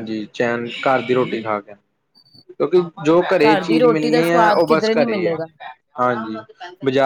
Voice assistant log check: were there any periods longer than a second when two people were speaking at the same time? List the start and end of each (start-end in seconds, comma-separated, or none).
3.4-5.3